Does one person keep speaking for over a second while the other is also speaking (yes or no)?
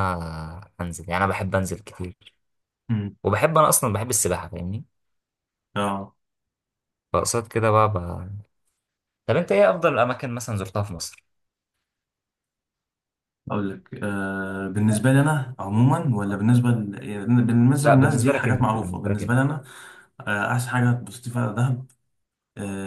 yes